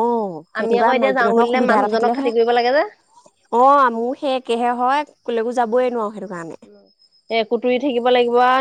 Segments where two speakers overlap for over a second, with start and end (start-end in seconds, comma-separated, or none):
0.6-2.8